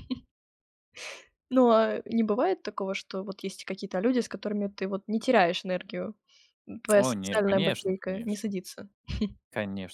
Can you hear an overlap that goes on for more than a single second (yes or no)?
yes